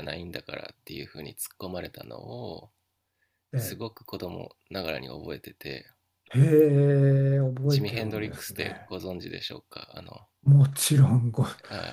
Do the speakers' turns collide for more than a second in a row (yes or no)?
yes